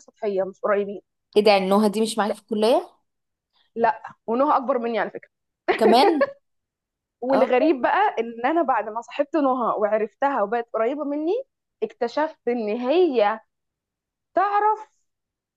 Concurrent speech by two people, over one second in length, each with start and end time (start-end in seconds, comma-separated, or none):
none